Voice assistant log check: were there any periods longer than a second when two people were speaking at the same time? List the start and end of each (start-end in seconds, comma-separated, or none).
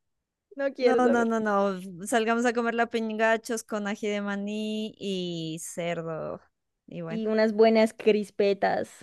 none